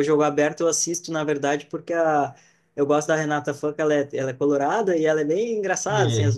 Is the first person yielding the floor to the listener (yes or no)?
no